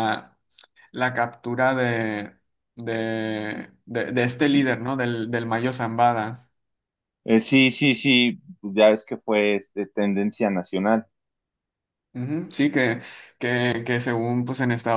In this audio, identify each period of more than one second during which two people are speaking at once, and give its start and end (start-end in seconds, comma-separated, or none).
none